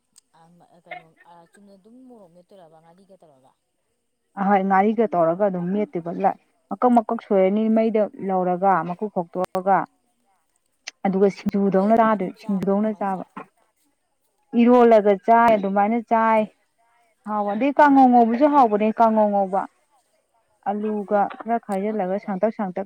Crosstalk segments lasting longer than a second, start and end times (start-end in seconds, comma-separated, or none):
11.7-13.2